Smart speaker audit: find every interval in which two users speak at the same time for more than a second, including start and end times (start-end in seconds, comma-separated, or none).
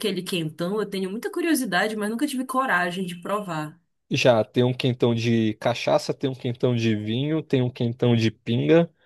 none